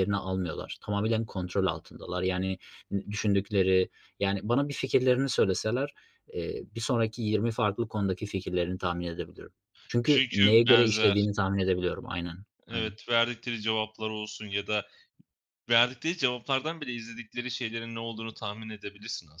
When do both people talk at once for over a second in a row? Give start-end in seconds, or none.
10.0-11.3